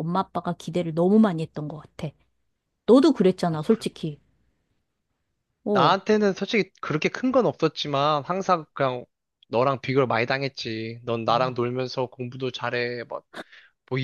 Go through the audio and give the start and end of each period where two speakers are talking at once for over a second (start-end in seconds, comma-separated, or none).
none